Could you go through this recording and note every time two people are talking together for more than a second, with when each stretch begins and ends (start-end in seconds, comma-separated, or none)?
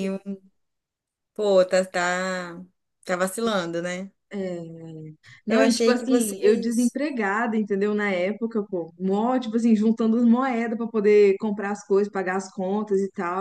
5.5-7.0